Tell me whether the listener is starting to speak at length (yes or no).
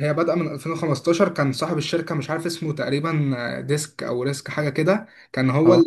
no